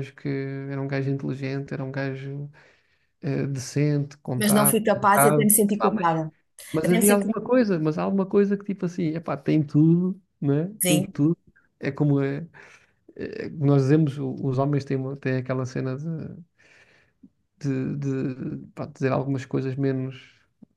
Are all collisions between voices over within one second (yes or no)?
no